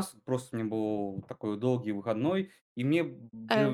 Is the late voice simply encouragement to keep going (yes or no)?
yes